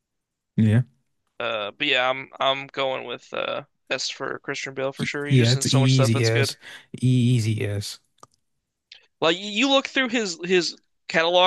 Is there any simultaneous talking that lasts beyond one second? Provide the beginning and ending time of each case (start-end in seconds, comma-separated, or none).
5.0-6.5